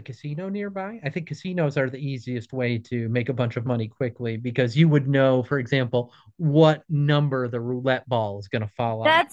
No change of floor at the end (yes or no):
no